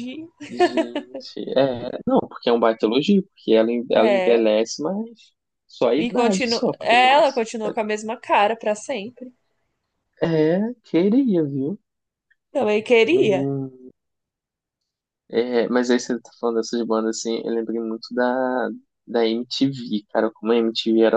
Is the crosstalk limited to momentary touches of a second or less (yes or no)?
no